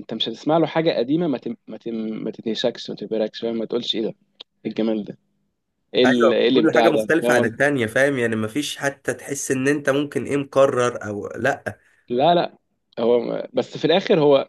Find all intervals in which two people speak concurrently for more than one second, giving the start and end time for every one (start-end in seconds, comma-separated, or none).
6.0-7.7